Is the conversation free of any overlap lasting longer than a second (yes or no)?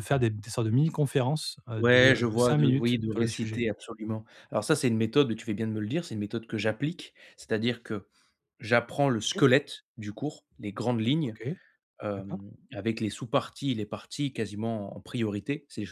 no